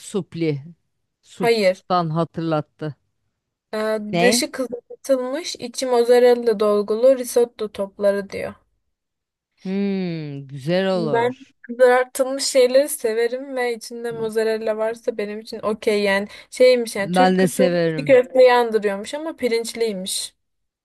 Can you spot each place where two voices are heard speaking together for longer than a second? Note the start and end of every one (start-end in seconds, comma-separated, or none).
17.0-18.2